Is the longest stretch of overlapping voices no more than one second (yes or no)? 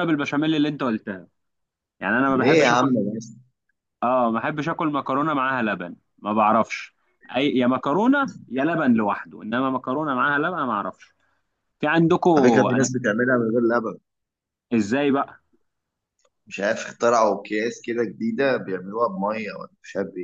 yes